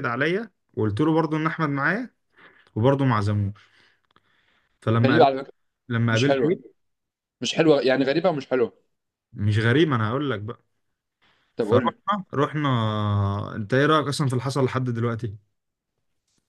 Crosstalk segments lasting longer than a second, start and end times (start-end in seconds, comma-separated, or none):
none